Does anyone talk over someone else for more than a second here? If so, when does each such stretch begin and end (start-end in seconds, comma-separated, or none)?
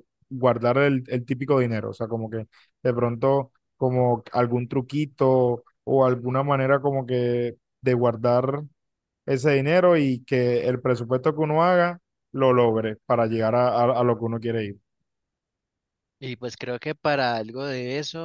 none